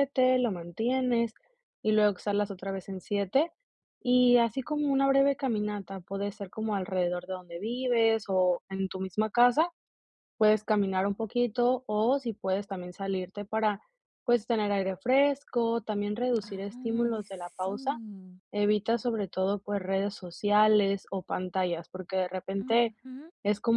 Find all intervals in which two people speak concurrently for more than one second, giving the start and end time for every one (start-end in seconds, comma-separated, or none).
16.5-17.8